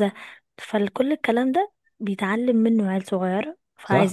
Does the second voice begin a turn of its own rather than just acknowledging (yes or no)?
no